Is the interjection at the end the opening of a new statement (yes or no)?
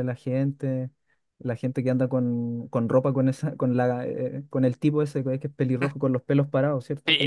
yes